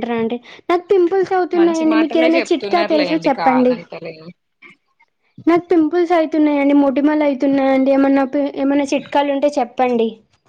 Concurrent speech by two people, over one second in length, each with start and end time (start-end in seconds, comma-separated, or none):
1.6-3.7